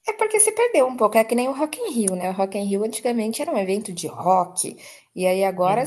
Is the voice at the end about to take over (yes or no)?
no